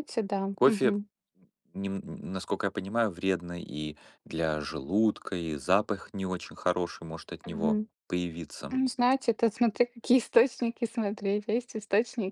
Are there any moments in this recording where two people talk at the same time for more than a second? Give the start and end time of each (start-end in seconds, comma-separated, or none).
none